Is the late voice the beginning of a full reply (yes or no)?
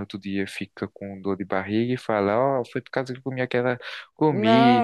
yes